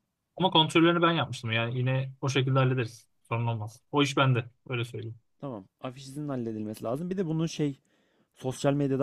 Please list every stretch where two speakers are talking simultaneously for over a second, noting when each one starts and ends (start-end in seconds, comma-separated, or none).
none